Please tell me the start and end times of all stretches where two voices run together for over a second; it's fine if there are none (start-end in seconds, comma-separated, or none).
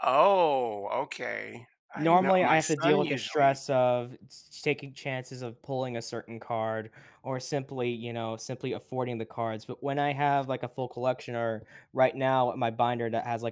2.0-3.6